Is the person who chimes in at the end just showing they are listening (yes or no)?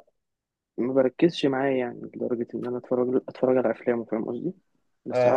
no